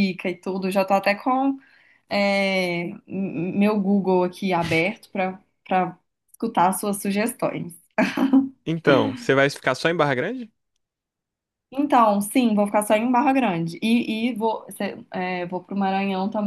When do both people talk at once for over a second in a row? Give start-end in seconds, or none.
none